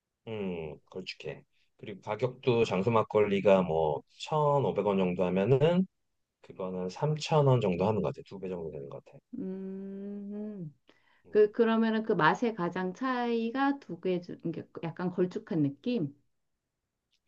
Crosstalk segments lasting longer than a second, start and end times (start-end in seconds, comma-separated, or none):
none